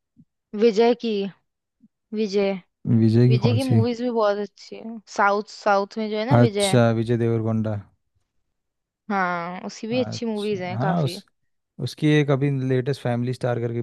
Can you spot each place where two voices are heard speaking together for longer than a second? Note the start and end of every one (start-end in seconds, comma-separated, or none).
9.9-11.2